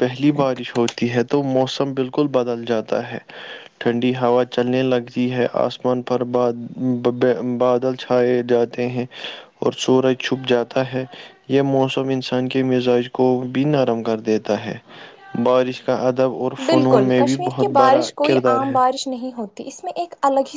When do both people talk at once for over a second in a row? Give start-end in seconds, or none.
16.7-18.7